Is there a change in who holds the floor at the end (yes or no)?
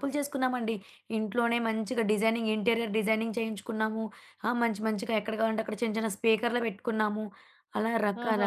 yes